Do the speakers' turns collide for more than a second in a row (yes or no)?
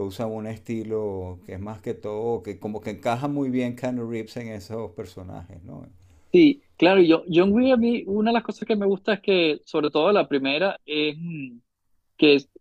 no